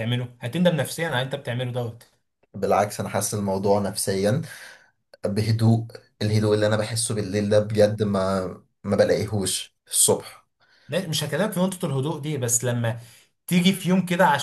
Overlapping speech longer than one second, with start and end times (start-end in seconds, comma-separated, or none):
none